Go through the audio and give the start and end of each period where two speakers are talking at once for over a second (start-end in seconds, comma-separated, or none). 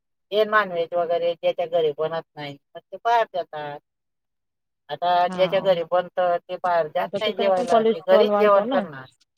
7.0-8.8